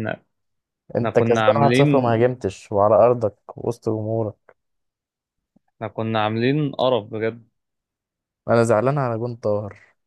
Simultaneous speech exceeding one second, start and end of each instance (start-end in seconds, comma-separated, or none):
1.0-2.2